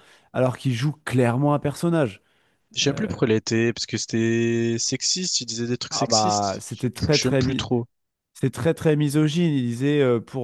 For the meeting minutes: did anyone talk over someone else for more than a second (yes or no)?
yes